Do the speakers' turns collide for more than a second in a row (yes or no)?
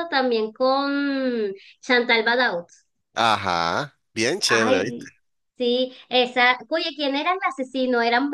no